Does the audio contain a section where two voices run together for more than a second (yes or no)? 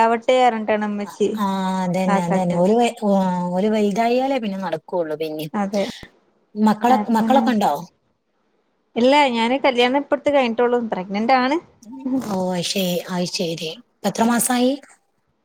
no